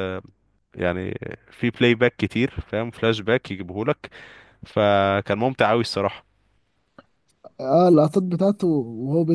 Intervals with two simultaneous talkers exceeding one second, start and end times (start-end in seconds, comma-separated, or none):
none